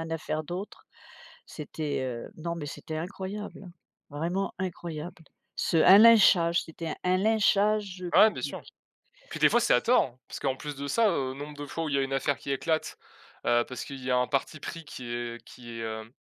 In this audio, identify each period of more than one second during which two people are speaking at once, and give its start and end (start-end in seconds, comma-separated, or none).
none